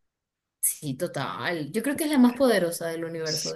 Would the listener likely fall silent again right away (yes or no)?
no